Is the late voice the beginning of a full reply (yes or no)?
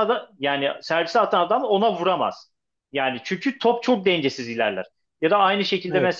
no